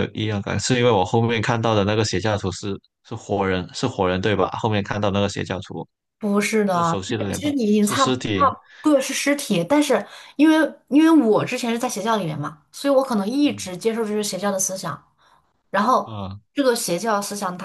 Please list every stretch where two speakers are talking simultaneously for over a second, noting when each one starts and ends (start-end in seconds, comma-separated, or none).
6.7-8.5